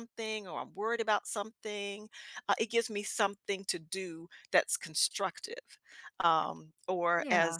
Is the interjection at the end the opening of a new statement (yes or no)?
no